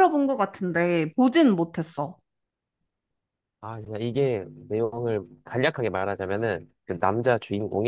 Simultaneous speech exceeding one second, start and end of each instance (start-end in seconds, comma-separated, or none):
none